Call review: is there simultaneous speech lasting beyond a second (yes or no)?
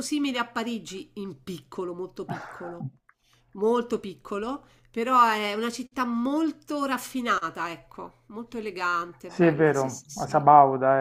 yes